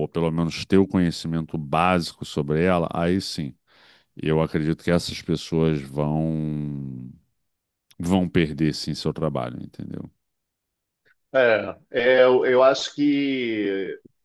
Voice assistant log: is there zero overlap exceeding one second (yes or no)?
yes